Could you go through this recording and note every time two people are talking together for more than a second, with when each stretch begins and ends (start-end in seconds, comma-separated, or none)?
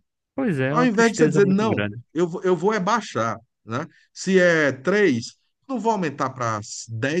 0.7-2.0